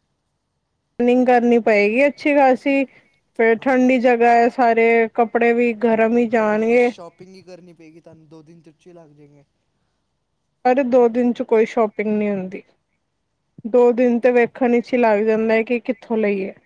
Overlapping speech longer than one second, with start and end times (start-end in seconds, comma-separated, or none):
none